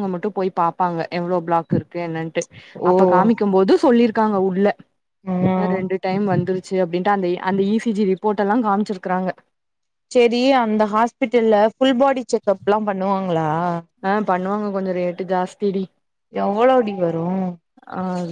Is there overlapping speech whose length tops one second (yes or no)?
no